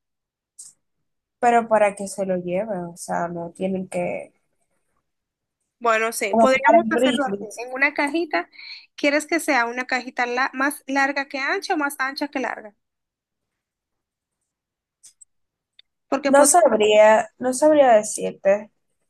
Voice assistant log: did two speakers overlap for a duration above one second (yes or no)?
yes